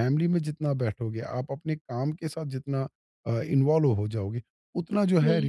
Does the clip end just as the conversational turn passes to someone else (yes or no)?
no